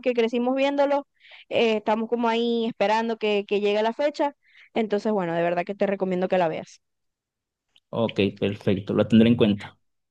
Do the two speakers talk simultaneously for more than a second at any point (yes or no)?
no